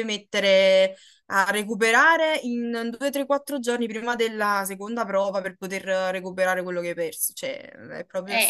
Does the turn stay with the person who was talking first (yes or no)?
no